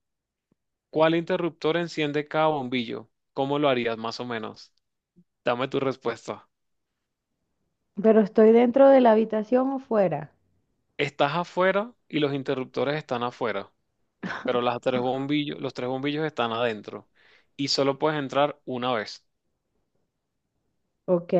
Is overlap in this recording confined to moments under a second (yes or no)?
yes